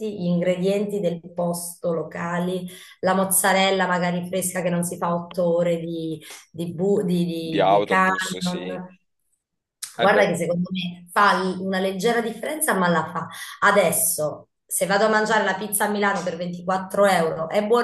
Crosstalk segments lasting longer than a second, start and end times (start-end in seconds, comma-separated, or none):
7.4-8.8